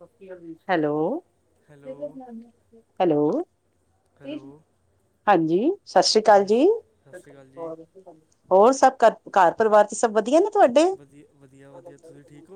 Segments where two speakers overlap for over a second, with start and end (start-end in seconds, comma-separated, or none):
none